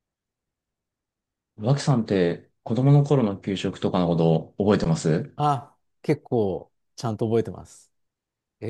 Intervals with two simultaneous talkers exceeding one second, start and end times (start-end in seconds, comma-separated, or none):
none